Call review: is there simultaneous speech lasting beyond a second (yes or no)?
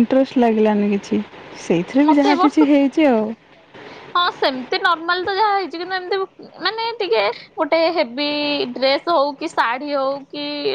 no